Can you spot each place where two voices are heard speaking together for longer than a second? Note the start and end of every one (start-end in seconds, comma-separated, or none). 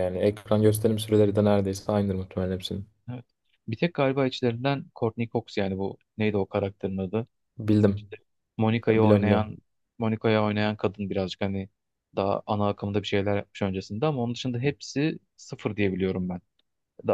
none